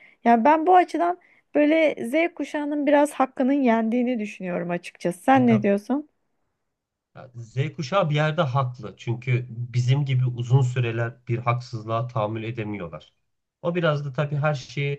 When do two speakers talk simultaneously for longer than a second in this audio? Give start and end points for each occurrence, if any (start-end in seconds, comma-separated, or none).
none